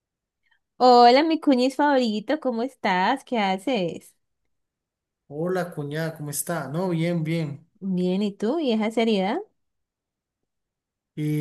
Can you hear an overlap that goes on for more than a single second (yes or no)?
no